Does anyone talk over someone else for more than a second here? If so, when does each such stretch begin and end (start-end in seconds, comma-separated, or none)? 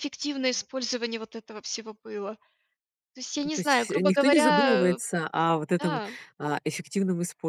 3.4-5.0